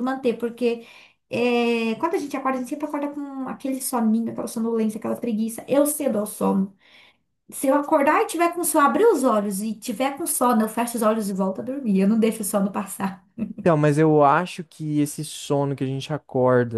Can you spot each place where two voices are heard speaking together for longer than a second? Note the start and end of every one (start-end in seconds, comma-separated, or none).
none